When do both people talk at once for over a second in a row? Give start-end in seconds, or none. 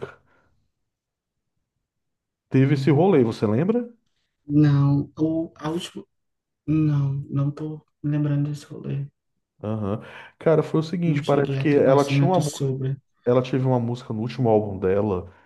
11.1-12.8